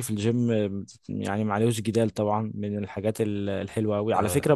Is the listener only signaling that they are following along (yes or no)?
yes